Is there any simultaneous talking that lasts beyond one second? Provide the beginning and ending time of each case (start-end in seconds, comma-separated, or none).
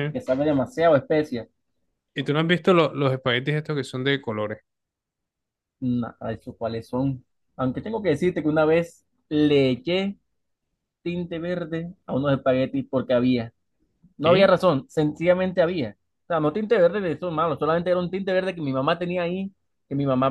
none